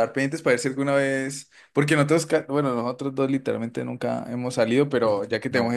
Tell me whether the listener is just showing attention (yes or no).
yes